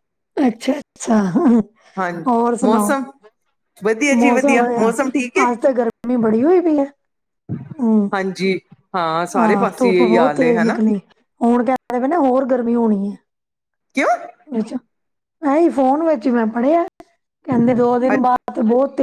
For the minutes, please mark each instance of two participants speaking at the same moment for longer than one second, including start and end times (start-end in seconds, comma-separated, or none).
9.4-10.8